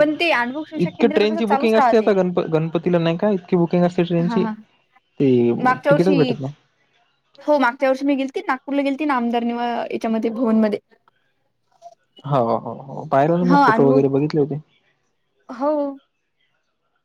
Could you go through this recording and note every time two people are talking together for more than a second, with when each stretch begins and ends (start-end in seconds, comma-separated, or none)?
0.8-2.1